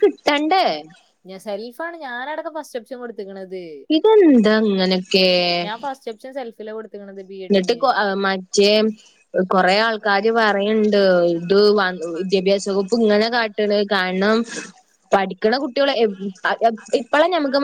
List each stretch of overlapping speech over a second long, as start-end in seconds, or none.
none